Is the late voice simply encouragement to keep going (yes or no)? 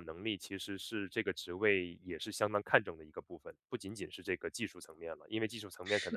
yes